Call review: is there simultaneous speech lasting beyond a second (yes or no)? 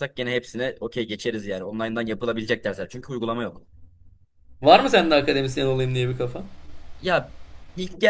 no